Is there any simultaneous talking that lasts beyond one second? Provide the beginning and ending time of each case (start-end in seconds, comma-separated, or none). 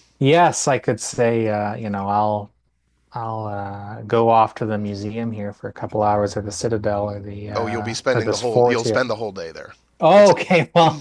7.6-9.0